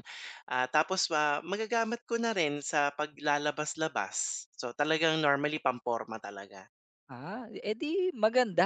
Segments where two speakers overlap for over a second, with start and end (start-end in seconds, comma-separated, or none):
none